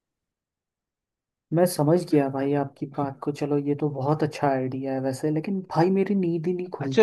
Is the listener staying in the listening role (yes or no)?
no